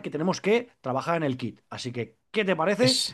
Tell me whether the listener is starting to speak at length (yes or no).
no